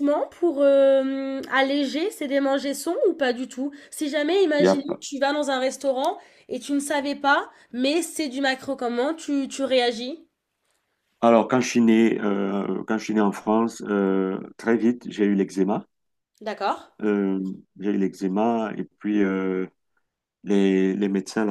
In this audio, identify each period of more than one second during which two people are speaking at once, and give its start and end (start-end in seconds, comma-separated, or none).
none